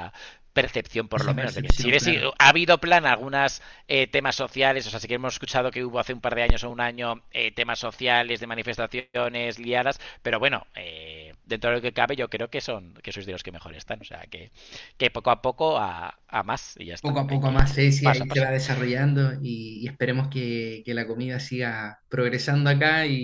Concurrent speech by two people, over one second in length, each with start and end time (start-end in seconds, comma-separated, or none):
1.1-2.3, 17.0-18.5